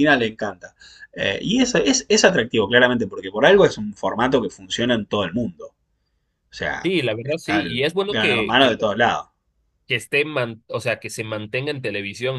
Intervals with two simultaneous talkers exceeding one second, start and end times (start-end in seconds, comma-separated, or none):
6.8-8.7